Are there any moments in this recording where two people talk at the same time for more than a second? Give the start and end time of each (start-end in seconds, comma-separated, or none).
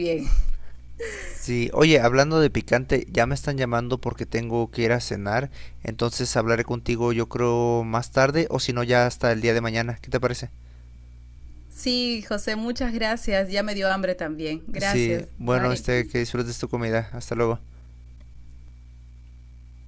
14.8-16.1